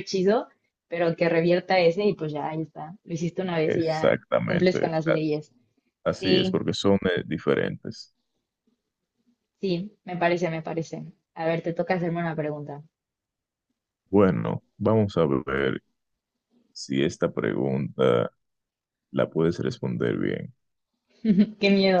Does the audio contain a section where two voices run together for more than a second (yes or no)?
yes